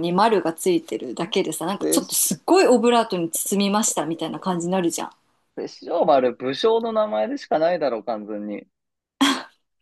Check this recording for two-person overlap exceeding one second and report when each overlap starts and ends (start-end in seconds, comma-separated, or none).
none